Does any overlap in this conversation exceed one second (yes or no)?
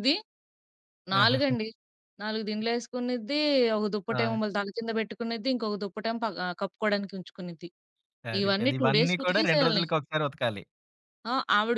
yes